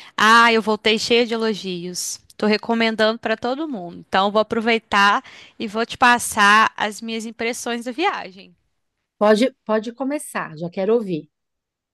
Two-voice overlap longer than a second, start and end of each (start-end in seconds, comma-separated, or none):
none